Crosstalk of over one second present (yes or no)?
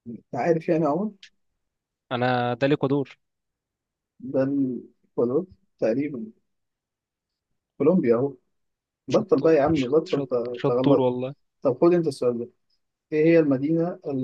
yes